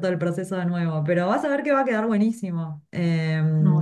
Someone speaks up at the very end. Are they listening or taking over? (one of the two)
listening